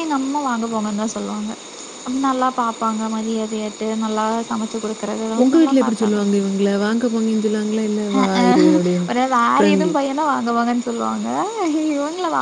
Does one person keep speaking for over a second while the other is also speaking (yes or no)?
no